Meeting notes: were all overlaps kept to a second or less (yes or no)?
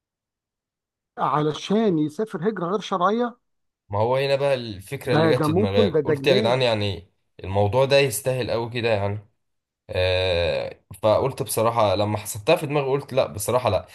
no